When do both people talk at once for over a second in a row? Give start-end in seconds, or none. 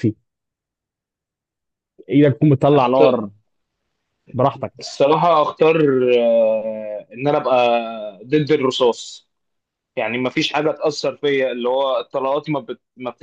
none